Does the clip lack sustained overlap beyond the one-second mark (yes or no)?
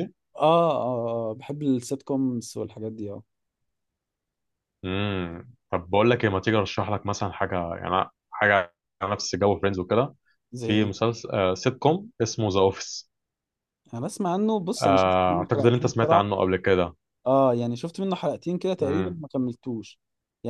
no